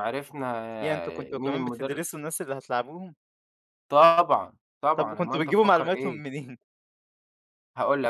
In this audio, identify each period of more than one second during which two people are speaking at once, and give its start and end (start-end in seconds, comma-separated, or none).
0.8-2.0, 5.0-6.2